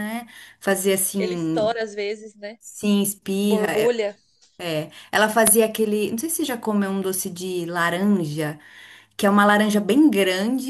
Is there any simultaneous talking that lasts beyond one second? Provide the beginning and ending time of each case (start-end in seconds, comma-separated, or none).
none